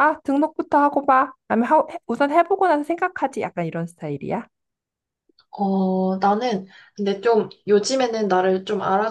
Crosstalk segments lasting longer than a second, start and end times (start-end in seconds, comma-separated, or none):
none